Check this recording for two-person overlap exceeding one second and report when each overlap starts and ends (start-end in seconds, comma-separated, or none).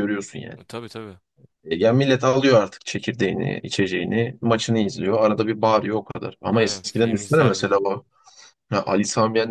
6.5-7.8